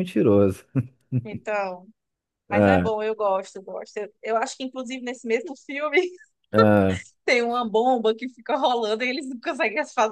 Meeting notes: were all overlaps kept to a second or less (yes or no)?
yes